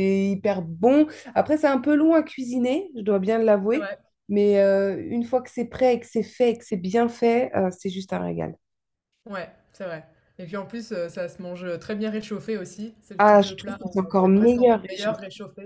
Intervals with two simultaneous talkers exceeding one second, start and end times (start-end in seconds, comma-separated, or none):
13.2-15.2